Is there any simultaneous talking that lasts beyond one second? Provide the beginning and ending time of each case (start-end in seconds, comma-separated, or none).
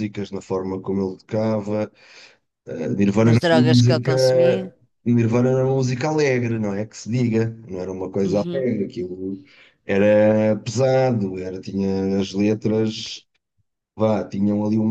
3.2-4.5